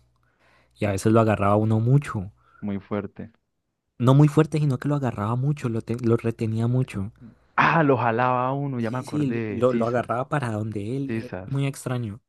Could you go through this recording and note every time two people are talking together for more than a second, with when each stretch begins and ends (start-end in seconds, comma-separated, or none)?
8.8-10.1